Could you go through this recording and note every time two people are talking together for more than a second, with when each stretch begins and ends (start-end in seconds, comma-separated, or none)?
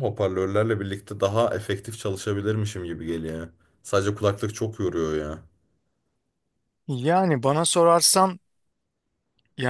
none